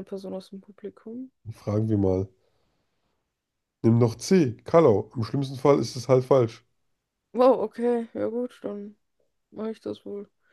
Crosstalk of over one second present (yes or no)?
no